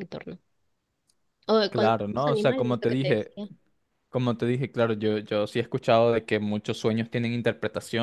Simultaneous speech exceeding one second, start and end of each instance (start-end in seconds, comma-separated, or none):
1.7-3.3